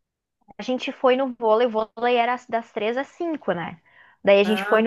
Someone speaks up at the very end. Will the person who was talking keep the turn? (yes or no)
yes